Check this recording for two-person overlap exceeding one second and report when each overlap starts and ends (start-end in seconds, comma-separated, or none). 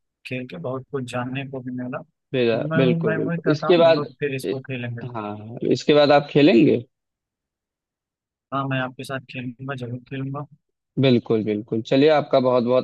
2.3-4.1